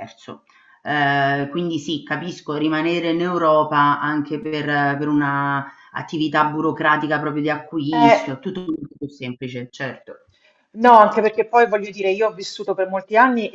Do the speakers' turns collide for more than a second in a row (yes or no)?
no